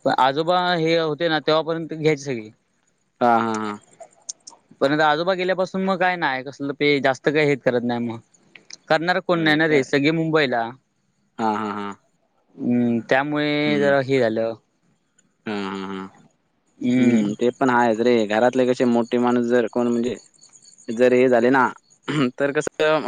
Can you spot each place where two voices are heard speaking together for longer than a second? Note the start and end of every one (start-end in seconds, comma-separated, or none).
none